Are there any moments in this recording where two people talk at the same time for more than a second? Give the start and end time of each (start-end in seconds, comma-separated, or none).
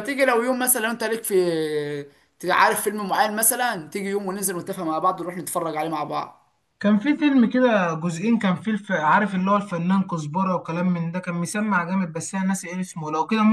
none